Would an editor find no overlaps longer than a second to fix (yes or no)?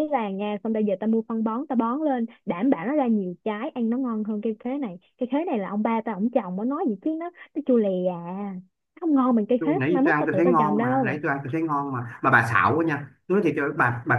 no